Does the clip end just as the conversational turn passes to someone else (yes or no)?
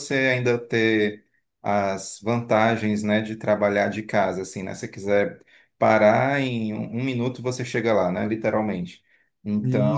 yes